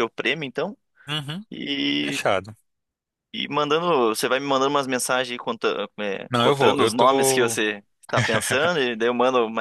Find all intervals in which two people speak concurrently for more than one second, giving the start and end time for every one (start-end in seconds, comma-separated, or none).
6.3-7.6